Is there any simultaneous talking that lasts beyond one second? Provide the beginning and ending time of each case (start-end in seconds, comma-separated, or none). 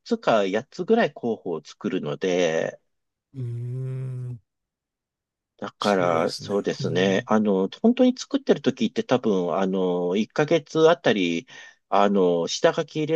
5.8-7.3